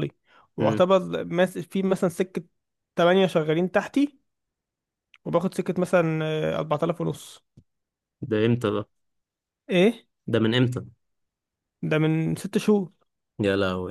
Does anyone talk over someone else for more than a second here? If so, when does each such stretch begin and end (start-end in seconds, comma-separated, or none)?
none